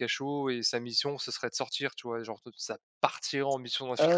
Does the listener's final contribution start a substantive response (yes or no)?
no